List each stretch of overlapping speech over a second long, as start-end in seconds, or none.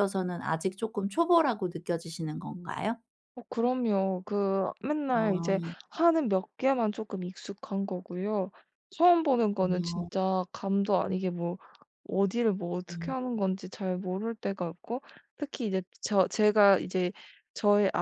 none